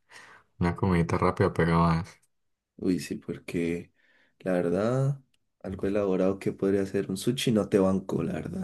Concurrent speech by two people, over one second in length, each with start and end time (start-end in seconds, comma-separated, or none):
none